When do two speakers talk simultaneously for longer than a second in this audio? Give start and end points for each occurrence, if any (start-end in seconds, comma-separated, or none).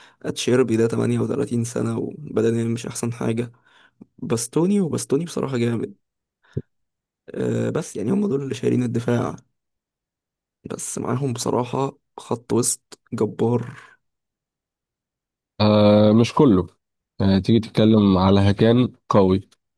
none